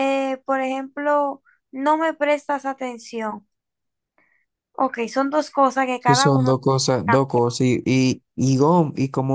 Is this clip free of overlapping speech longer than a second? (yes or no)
yes